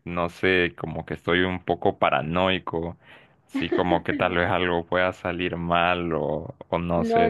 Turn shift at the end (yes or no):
yes